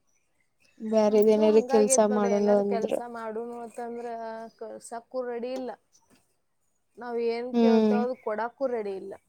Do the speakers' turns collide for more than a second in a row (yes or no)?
yes